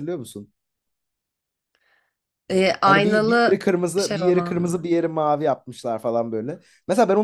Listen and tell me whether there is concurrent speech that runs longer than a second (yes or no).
yes